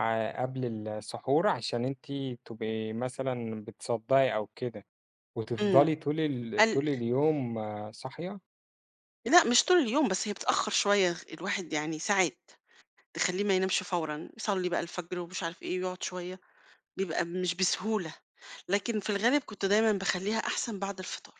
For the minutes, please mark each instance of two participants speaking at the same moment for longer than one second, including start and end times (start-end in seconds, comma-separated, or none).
none